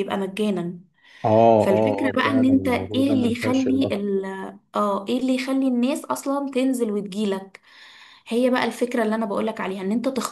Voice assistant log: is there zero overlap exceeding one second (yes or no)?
no